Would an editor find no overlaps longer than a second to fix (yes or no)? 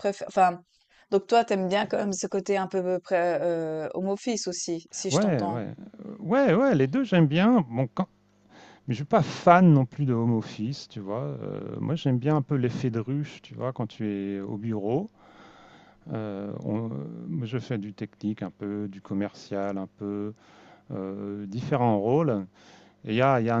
yes